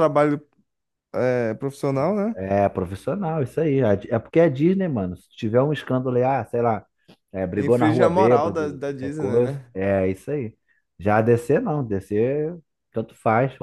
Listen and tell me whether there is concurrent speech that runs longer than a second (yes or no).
yes